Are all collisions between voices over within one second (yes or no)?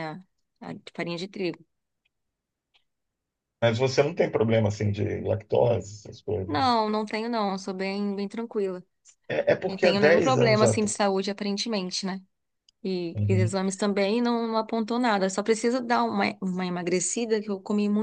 no